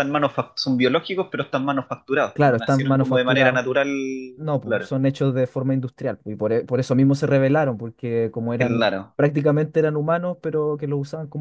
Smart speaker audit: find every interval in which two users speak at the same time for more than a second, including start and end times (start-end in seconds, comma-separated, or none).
2.3-3.6